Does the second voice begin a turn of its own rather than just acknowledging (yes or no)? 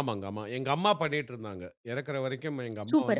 yes